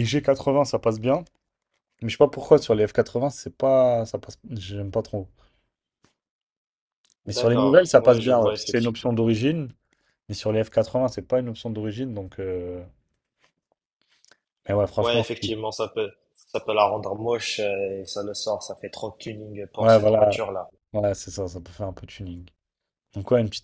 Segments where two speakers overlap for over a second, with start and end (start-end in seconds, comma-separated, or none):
7.3-9.1